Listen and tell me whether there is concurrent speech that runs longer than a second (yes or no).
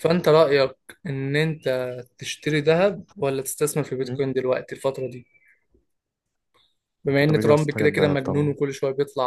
yes